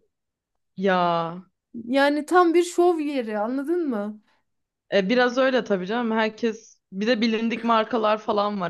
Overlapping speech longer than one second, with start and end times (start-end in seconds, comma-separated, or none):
none